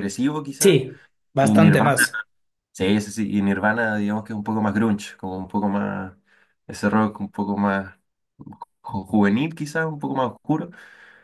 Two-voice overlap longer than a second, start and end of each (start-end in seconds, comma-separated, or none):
none